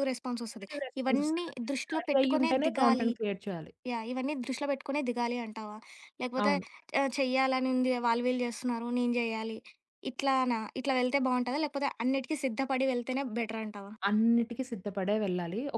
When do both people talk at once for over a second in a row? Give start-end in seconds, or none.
0.5-3.1